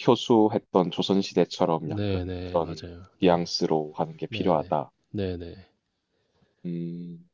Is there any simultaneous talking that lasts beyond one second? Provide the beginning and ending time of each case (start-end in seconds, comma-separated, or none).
1.8-3.4